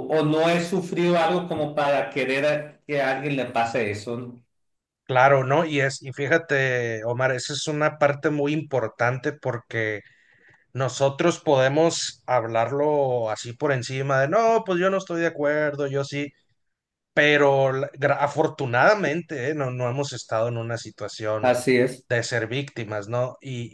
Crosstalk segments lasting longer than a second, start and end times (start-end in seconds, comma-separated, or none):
none